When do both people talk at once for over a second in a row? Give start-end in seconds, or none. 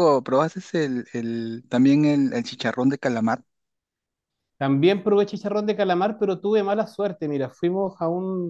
none